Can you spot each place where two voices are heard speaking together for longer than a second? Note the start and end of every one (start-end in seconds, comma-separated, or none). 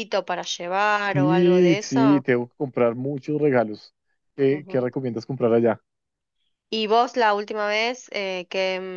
1.0-2.2